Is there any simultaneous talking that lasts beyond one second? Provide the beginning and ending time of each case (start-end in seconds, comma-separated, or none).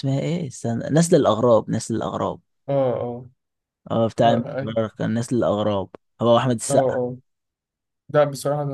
none